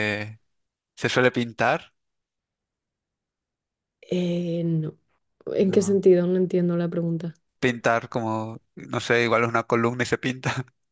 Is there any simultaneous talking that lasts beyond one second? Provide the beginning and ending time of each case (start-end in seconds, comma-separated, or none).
none